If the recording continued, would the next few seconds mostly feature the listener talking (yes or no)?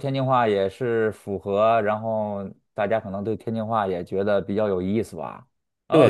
yes